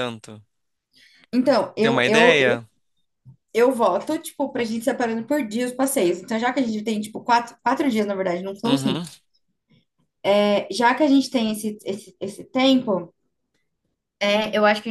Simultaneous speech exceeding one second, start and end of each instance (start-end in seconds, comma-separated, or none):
none